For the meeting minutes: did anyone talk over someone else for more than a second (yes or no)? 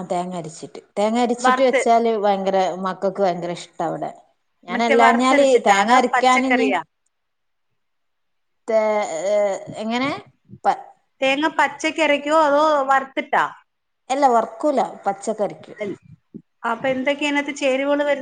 yes